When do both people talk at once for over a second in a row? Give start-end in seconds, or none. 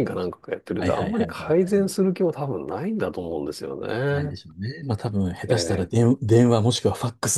0.8-2.0